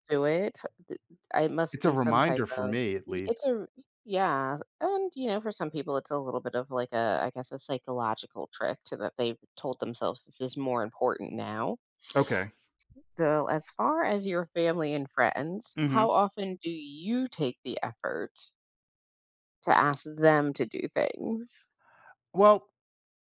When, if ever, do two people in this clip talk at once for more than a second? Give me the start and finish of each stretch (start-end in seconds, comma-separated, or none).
1.7-3.5